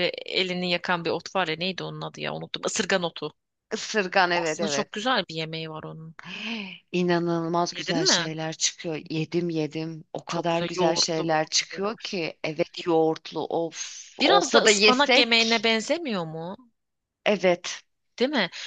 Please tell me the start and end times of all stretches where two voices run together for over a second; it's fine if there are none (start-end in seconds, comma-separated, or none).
10.3-12.2, 14.2-15.7